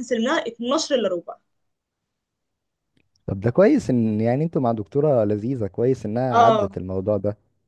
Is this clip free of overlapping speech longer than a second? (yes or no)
yes